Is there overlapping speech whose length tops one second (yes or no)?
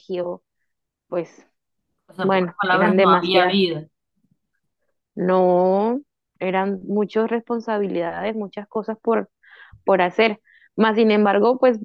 yes